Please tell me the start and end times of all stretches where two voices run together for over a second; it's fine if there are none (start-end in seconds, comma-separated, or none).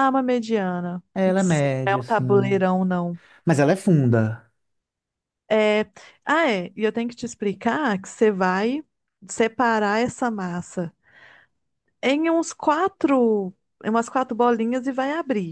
1.1-2.6